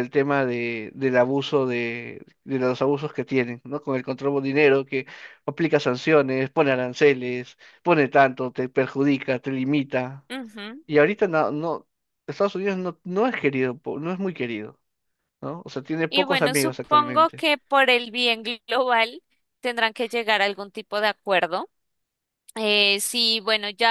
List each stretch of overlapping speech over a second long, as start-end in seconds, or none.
16.1-17.4